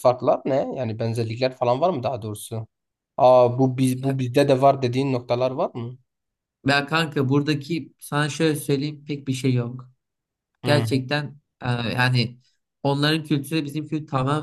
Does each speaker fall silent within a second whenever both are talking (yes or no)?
yes